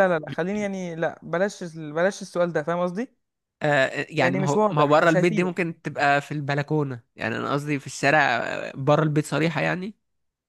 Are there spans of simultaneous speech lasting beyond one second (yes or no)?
yes